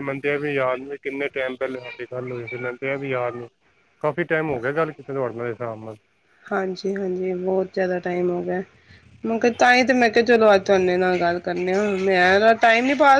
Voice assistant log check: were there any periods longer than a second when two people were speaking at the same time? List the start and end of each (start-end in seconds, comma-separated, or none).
none